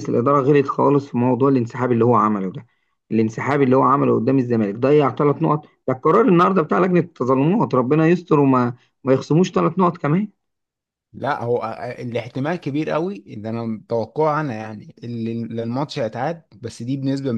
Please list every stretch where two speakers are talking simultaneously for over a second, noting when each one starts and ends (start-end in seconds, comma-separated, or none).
none